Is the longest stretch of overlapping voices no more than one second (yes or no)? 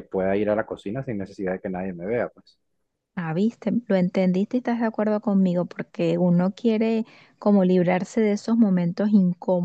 yes